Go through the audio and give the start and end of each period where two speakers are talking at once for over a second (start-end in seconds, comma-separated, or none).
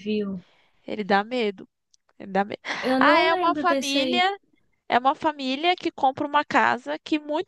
3.0-4.3